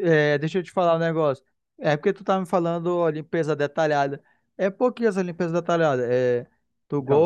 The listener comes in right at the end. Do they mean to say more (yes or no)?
no